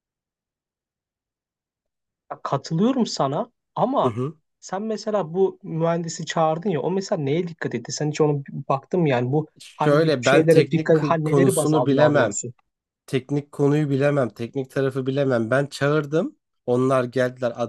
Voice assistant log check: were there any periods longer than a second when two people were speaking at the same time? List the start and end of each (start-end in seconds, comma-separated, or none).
9.6-12.4